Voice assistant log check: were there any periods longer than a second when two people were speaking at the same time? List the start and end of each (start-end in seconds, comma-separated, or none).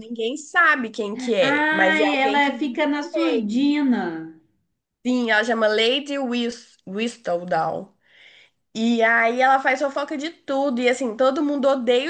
1.4-3.7